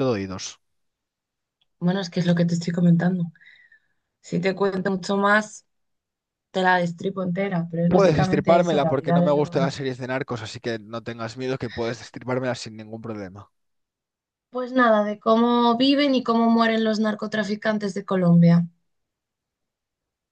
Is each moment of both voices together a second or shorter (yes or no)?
no